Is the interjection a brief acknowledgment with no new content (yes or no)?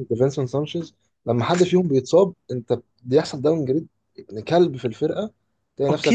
no